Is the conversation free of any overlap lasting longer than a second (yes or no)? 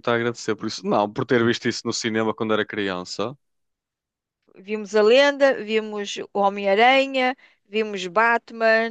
yes